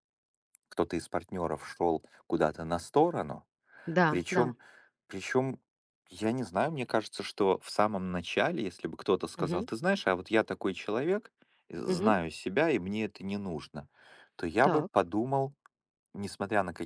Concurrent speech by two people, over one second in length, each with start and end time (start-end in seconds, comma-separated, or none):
none